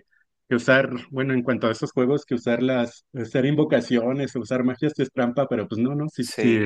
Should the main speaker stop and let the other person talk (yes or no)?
no